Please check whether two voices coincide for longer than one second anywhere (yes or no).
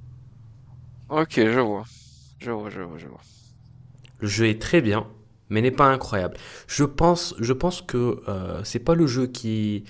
no